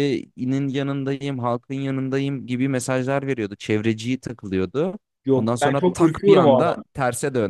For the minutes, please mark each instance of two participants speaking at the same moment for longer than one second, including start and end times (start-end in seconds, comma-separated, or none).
5.3-6.8